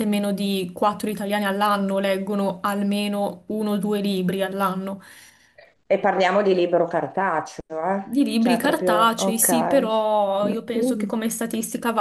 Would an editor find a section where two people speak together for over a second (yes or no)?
yes